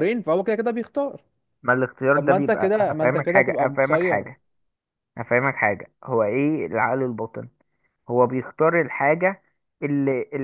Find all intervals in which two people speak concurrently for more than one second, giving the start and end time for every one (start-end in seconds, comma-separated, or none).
2.1-4.2